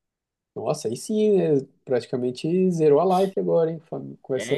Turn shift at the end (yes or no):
yes